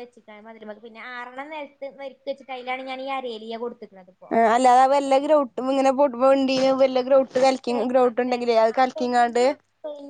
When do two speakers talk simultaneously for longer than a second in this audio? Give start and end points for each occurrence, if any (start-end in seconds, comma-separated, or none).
7.7-9.4